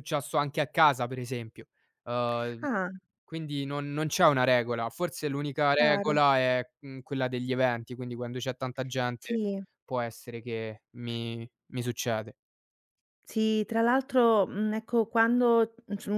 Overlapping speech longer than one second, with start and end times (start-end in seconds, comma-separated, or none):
none